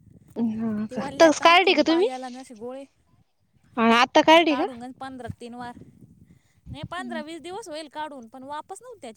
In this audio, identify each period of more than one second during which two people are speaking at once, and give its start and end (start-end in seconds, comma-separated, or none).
0.7-2.1